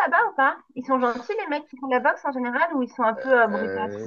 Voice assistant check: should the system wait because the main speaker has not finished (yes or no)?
no